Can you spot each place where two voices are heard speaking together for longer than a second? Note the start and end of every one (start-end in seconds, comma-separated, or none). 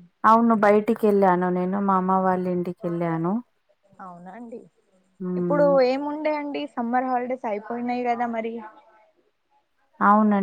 none